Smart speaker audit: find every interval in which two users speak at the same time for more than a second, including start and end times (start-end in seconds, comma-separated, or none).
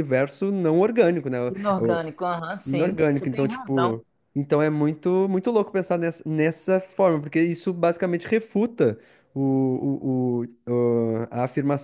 2.6-4.0